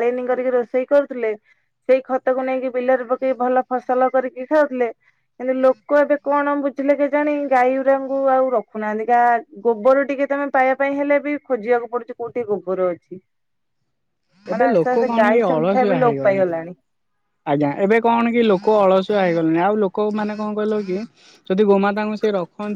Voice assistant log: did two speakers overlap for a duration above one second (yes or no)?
yes